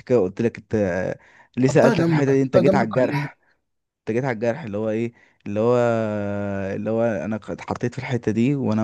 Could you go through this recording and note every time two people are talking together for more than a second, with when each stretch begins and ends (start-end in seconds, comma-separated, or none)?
1.6-3.3